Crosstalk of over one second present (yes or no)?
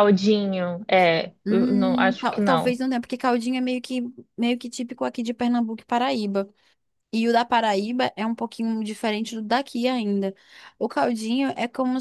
yes